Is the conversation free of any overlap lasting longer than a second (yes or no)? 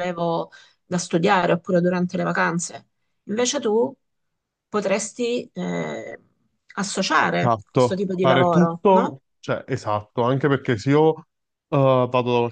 no